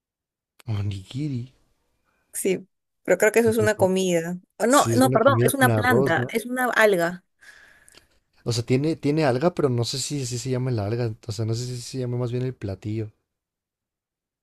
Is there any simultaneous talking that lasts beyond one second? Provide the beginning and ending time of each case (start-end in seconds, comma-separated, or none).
4.7-6.3